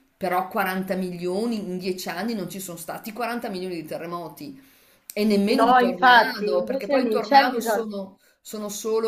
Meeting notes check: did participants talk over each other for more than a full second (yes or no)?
yes